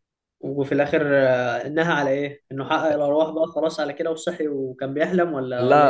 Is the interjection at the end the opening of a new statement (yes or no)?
yes